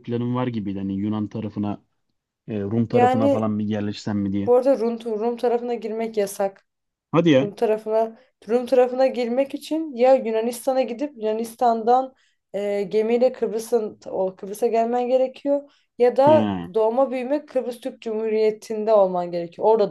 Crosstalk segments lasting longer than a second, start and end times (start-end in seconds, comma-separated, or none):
none